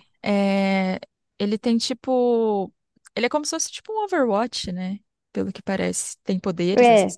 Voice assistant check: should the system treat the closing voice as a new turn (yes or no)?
yes